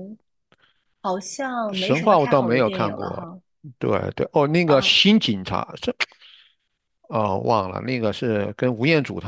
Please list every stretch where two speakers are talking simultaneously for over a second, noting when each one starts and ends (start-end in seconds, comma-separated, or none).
1.7-3.3